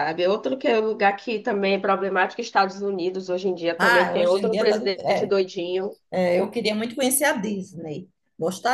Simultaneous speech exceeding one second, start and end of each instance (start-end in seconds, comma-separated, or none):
3.8-5.3